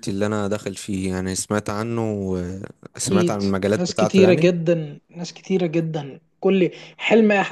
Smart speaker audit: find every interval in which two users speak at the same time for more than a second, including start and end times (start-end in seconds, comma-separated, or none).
3.0-4.5